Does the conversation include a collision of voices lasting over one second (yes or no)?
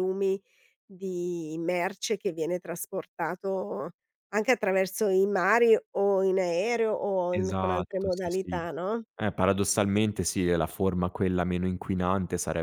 yes